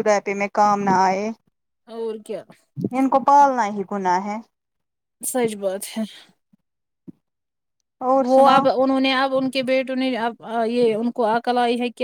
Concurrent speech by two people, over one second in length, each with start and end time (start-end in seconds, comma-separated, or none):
none